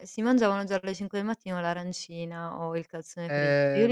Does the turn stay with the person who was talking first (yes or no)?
no